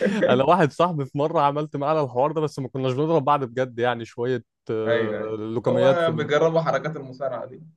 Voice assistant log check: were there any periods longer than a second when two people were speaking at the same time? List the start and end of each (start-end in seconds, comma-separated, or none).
4.8-6.3